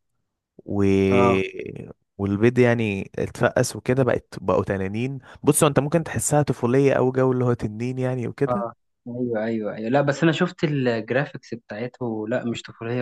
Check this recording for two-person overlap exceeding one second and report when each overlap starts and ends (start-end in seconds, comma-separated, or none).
none